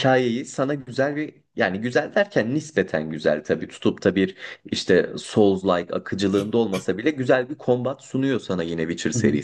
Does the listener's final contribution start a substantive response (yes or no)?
yes